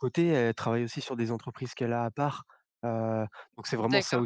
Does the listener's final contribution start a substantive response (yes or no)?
yes